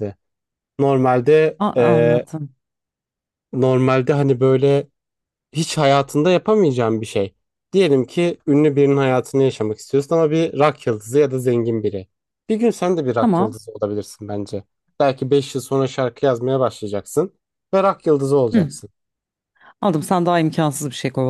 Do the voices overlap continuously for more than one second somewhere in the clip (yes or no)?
no